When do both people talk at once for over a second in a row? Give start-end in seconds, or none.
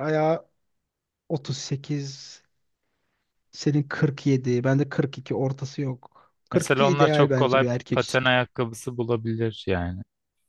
6.5-8.2